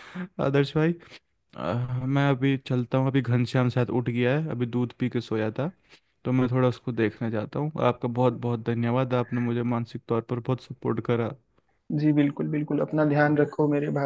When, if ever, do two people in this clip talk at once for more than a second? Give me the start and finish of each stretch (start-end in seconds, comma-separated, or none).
none